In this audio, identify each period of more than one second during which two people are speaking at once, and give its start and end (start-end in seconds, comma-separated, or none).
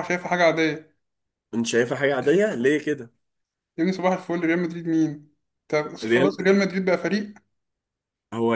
none